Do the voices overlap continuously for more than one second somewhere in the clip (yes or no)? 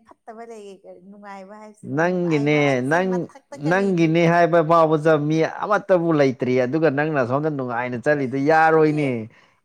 no